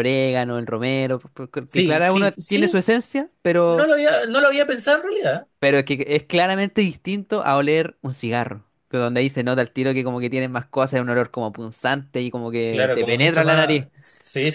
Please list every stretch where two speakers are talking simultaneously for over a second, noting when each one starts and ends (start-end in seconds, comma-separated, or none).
1.6-2.8, 12.7-13.9